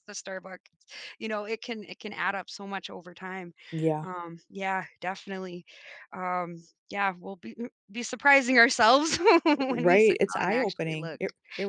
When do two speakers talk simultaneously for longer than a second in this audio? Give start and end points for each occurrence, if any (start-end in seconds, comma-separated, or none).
9.6-11.2